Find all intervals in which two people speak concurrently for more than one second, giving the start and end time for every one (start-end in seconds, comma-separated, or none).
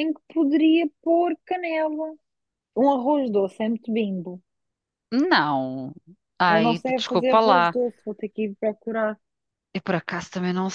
6.5-7.8